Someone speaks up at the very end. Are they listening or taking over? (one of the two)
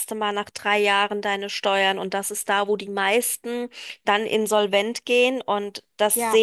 taking over